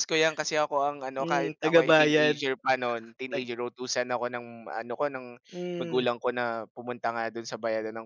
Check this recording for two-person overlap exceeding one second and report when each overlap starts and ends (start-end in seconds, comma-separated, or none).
1.2-2.4